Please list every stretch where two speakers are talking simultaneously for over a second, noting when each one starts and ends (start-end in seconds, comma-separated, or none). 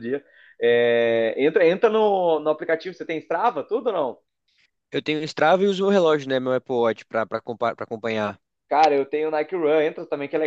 none